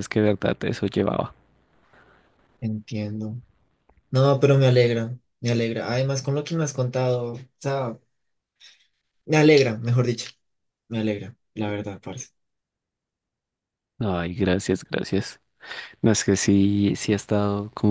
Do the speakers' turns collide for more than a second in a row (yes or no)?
no